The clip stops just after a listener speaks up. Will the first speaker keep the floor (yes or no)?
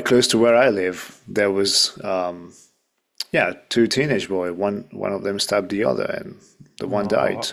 no